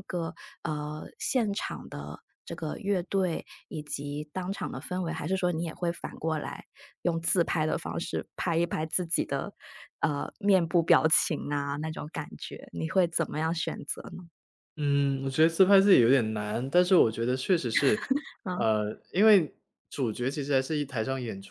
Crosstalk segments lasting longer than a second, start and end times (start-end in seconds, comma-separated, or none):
none